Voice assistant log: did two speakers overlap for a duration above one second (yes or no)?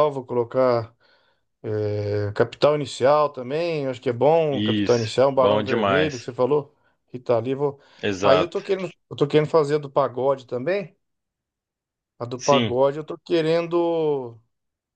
yes